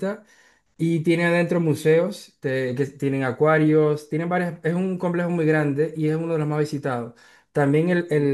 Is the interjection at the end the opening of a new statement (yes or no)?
no